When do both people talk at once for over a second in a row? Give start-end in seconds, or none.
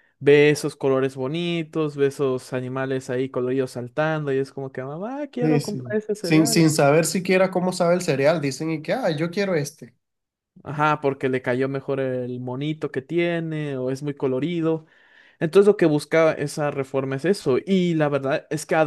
5.4-6.7